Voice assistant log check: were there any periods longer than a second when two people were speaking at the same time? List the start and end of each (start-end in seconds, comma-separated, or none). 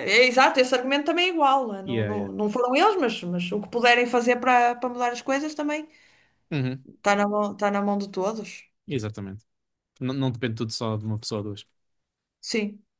none